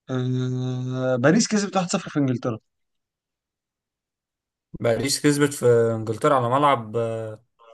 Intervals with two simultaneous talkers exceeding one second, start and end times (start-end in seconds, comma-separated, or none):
none